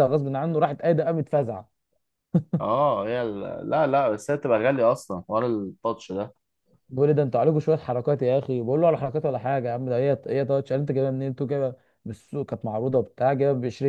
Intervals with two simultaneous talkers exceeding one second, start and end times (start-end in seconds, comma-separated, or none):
none